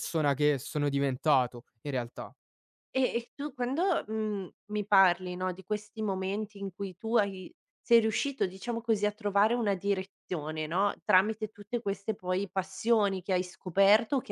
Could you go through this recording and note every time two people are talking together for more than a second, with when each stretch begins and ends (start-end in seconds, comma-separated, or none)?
none